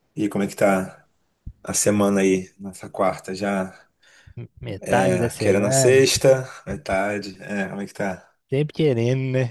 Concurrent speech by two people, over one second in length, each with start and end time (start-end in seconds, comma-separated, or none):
4.8-6.1